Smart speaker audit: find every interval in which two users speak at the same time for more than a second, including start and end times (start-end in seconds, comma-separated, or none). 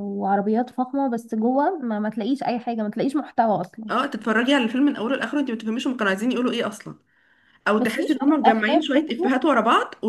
7.8-9.4